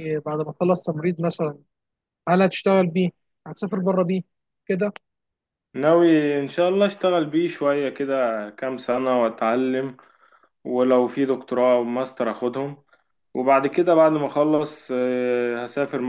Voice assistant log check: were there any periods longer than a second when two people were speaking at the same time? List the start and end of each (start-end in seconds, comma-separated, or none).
none